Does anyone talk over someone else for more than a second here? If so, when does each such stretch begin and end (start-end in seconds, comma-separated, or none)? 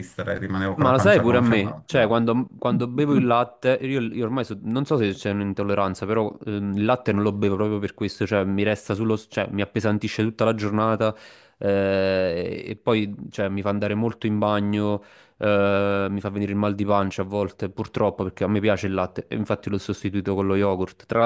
0.7-2.2